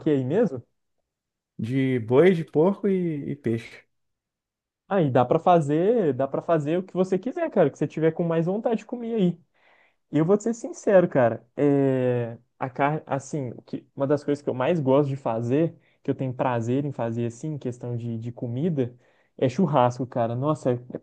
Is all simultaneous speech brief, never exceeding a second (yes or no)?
yes